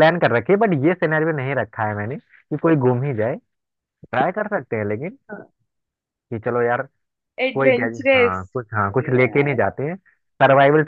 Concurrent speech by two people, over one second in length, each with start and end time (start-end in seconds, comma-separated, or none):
7.5-9.6